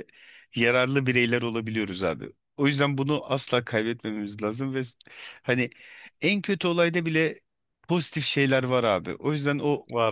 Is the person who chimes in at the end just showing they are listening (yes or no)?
yes